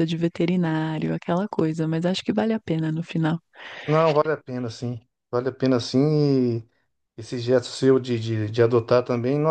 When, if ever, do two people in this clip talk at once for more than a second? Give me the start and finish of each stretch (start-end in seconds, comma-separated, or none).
none